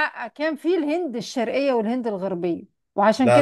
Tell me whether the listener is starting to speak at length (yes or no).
no